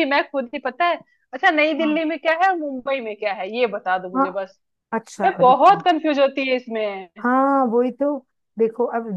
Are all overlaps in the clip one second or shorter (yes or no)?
yes